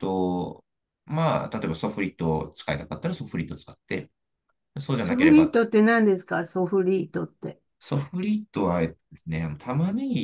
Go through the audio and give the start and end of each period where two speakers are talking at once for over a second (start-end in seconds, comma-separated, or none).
none